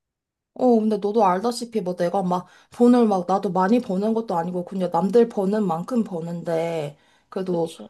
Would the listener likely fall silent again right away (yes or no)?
yes